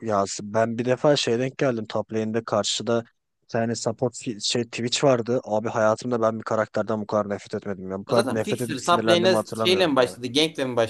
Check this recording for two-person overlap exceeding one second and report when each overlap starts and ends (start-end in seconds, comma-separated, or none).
8.1-10.2